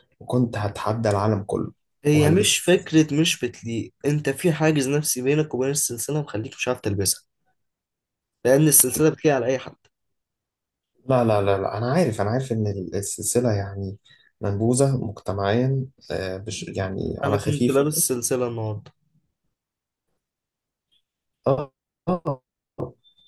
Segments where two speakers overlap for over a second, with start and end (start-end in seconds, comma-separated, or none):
none